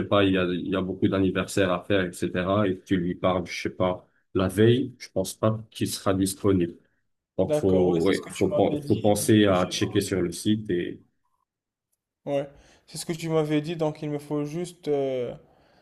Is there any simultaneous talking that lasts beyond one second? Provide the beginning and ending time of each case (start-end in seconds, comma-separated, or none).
7.5-9.8